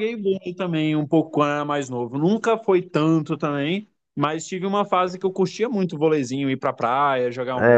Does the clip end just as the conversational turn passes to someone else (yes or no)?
yes